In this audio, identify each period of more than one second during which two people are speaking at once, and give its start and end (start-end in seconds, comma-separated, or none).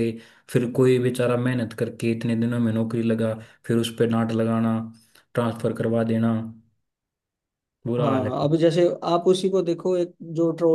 none